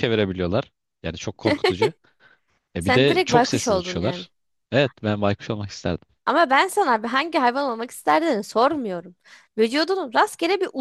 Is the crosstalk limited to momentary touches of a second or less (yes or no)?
no